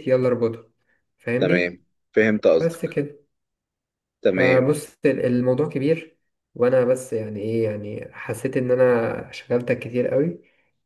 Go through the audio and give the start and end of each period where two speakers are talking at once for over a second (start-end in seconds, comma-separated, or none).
none